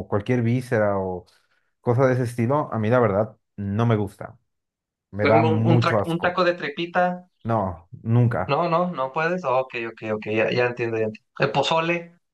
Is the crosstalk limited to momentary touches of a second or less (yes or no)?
no